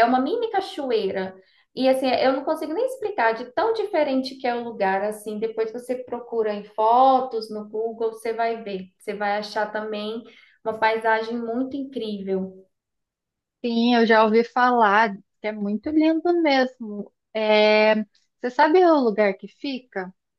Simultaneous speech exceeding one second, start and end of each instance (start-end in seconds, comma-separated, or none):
none